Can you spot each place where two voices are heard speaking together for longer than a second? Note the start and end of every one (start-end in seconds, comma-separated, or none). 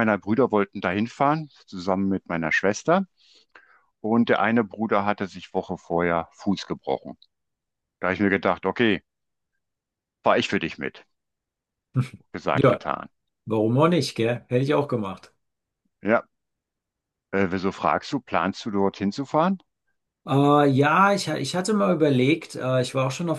none